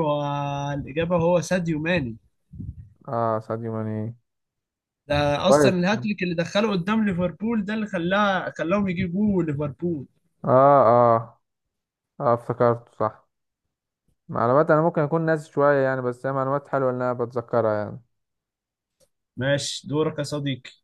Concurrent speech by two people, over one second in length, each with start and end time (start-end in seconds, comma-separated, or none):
none